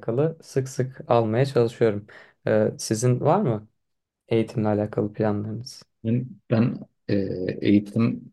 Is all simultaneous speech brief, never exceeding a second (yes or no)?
yes